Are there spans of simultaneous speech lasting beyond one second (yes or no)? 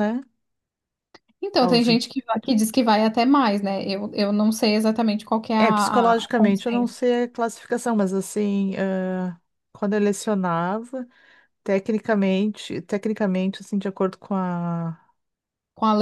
yes